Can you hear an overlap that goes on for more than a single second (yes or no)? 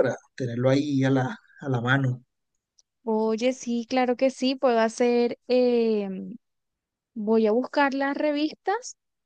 no